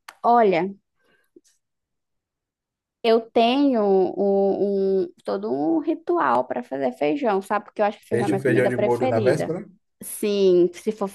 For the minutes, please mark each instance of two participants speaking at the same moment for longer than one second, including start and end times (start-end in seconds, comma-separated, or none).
8.1-9.6